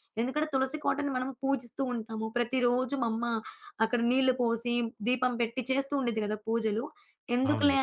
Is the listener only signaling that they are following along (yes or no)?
yes